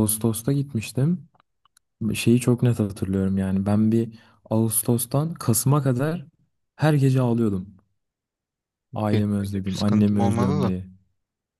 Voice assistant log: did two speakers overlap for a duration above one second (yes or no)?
yes